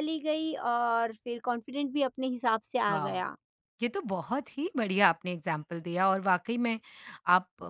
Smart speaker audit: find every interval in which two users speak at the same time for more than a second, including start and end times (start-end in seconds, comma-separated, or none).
none